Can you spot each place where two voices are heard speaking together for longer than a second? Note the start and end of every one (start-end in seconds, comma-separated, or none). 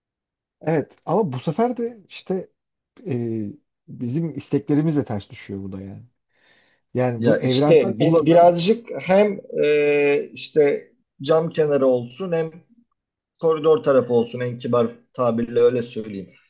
7.2-8.5